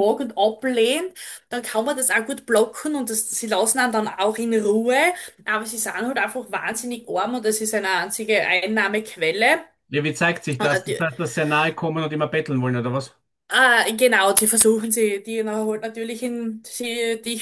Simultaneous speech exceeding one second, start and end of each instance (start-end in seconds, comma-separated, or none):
none